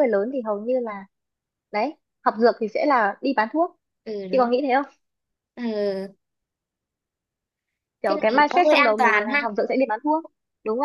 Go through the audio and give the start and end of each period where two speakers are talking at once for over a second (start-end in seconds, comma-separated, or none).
8.0-9.4